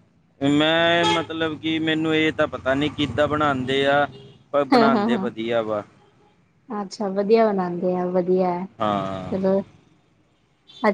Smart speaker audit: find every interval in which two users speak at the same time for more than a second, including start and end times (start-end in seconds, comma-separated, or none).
none